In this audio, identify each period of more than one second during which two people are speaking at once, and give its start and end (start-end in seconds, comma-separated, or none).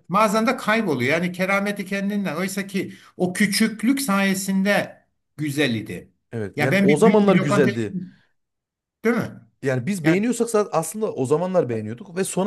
6.5-8.0